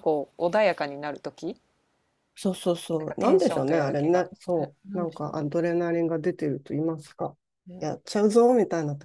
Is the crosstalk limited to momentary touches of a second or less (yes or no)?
no